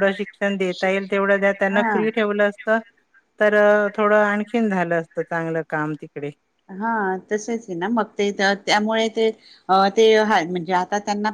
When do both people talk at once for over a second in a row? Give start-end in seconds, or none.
none